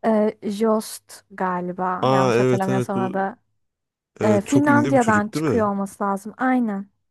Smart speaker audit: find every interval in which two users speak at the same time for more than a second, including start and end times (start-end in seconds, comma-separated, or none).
2.0-3.3, 4.2-5.7